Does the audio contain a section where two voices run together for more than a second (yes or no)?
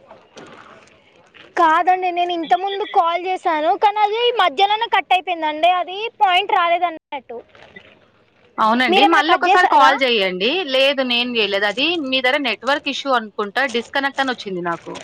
no